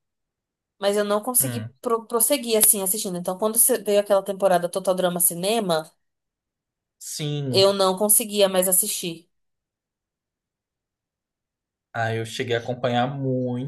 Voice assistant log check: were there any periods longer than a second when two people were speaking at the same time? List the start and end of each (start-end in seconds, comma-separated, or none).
none